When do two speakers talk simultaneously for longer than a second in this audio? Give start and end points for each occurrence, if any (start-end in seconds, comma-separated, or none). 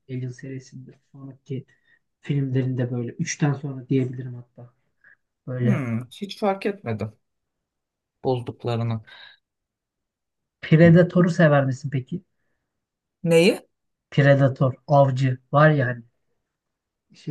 none